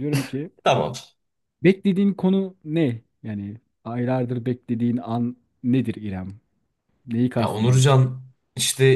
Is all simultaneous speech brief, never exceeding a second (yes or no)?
yes